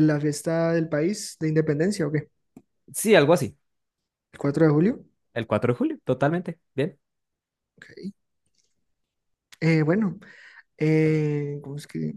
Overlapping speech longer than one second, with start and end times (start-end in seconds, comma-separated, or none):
none